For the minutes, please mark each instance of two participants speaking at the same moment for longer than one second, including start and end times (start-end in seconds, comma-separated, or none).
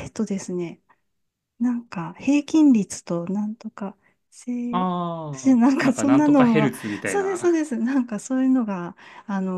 5.3-7.6